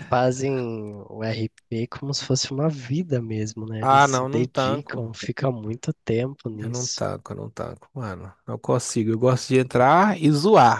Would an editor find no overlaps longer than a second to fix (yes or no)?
no